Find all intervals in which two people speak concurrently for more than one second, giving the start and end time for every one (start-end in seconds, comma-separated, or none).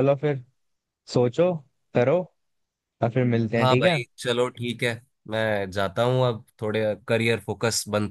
none